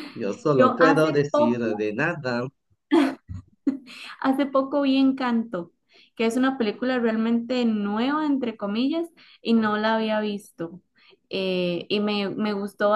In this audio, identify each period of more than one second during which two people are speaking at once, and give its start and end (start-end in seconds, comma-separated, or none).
0.5-1.8